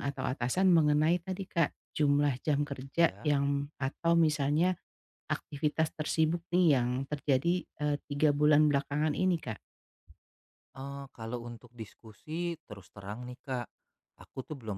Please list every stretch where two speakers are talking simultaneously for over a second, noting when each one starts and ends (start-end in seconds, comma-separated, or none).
none